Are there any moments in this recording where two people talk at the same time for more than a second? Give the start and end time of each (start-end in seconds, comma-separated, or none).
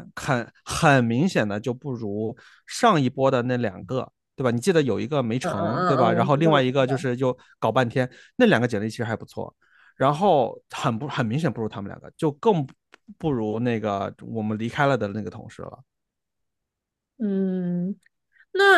5.4-7.1